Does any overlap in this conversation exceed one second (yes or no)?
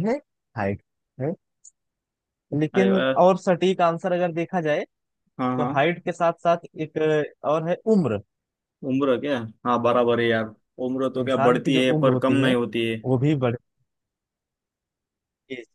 yes